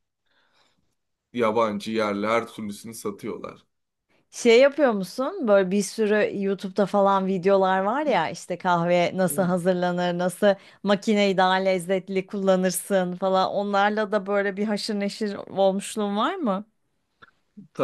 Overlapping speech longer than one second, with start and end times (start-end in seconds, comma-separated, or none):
none